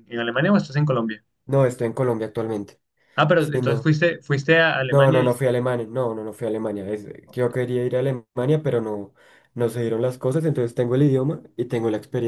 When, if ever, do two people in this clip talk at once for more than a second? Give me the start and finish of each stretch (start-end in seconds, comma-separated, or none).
none